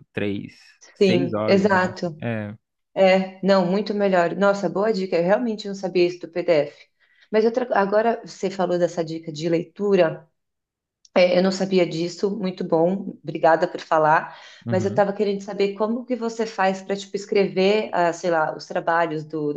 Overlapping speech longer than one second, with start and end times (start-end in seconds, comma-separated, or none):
1.0-2.2